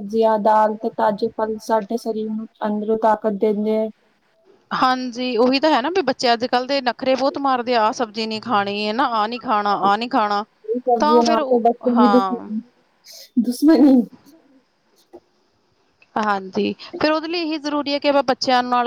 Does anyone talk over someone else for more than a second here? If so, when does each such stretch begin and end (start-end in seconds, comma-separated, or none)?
11.0-12.5